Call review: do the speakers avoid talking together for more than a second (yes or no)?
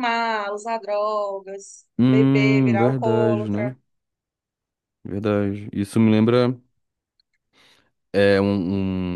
no